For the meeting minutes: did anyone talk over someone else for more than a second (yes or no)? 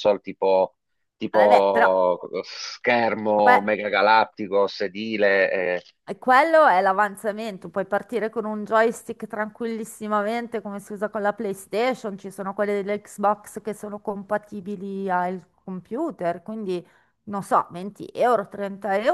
no